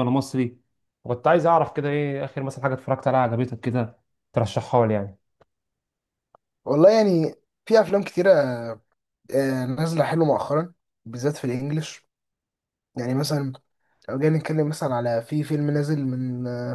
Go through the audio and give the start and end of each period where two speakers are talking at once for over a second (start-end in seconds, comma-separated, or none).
none